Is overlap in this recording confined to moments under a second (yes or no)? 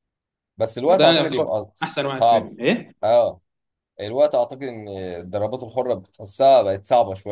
no